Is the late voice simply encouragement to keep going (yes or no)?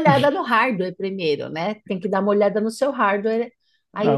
no